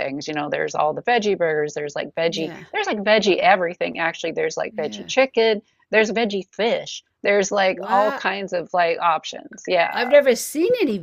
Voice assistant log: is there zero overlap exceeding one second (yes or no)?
yes